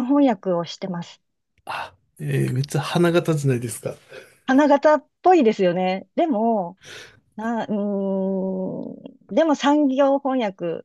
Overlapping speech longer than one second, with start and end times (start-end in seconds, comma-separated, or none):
none